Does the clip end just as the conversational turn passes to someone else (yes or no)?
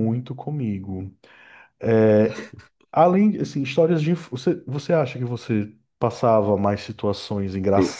no